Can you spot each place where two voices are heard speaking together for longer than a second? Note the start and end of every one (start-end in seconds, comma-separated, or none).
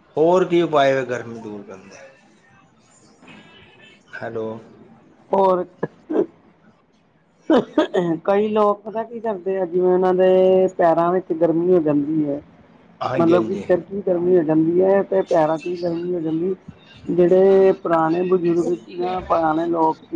none